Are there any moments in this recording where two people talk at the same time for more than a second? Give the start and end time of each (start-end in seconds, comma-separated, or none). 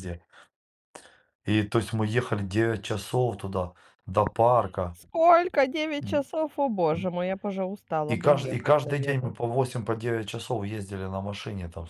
8.1-9.3